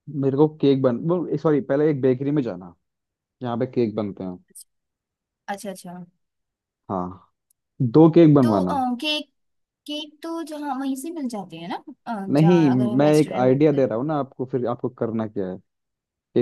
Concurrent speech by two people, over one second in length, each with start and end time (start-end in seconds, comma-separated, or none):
12.3-13.9